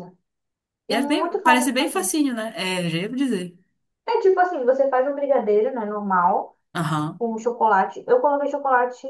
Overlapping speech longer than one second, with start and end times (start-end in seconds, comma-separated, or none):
0.9-2.1